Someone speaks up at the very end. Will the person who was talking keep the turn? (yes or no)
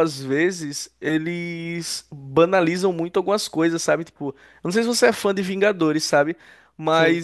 yes